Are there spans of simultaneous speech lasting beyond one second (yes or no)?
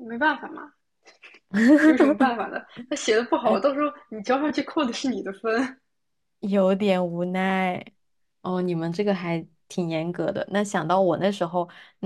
no